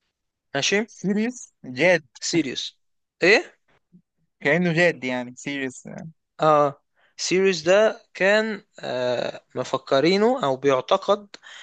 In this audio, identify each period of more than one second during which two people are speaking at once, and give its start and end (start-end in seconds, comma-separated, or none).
none